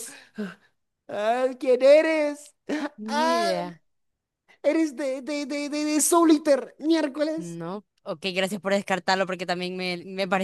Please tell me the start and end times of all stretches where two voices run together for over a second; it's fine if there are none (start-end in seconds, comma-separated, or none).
none